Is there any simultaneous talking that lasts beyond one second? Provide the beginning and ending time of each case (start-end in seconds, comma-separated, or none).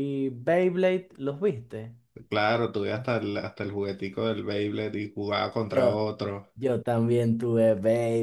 none